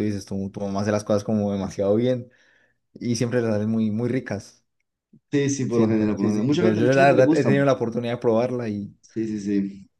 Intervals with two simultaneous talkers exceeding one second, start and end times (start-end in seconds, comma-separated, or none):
5.7-7.5